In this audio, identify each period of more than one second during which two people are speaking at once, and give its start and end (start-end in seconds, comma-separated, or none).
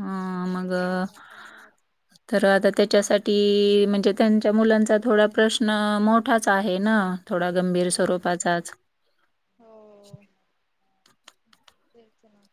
none